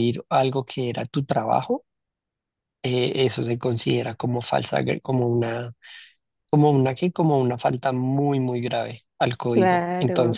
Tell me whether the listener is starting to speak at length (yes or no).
no